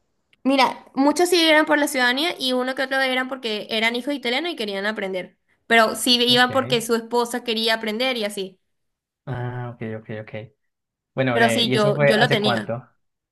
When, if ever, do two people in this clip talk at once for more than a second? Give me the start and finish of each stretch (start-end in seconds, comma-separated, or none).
11.3-12.7